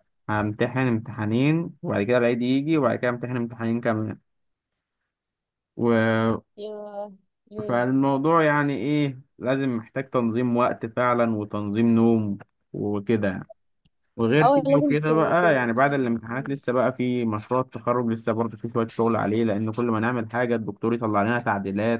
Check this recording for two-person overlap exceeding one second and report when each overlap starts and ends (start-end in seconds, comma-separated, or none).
14.4-16.6